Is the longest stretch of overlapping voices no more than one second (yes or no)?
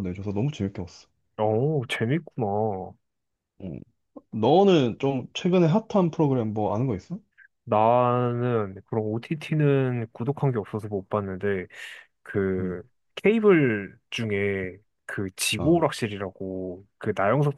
yes